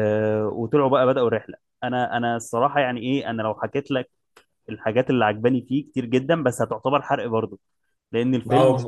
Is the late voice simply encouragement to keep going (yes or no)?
no